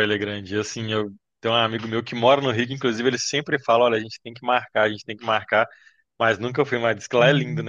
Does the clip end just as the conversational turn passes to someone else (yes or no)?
yes